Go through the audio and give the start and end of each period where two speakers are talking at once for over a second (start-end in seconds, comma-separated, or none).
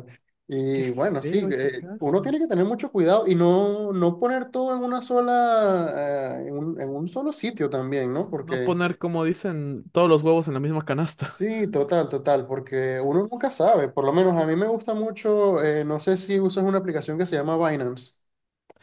0.7-2.2